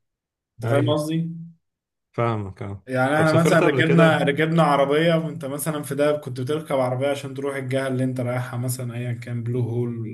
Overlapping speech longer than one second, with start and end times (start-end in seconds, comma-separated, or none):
2.9-4.3